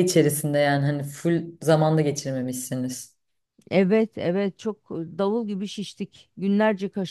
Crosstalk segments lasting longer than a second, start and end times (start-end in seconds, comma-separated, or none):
none